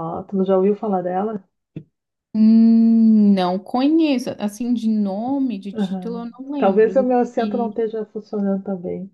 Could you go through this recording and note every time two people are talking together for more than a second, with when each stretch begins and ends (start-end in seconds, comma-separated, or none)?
5.7-7.8